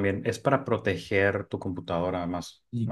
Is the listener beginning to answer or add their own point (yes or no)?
yes